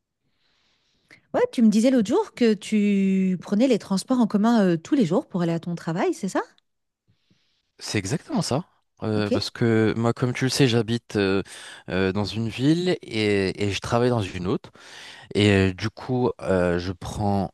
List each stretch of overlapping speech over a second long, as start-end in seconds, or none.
none